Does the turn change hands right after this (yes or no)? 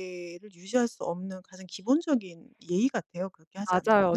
yes